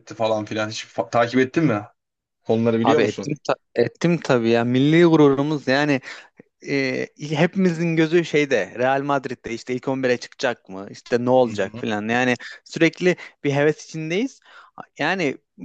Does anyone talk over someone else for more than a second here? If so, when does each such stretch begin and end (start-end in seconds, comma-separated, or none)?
none